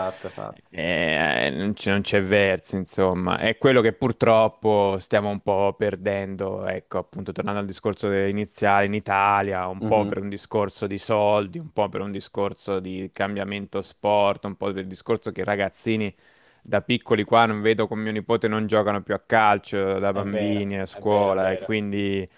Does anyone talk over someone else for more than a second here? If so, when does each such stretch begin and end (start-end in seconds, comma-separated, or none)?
20.1-21.8